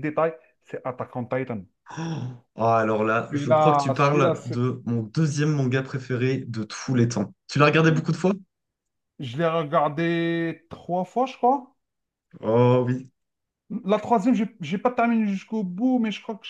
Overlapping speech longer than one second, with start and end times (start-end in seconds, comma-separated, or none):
3.3-4.6